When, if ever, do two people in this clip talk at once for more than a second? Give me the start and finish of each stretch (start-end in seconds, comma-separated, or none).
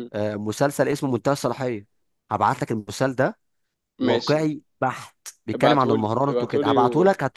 5.5-6.8